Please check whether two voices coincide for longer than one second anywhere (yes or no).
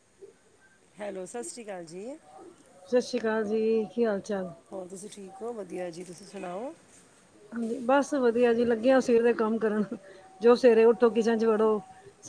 no